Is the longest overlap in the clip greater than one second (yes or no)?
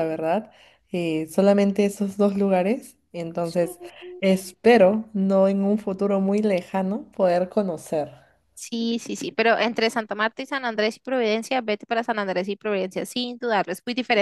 no